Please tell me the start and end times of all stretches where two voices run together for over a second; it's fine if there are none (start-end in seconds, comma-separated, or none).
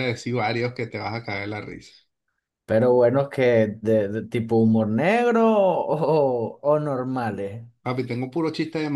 none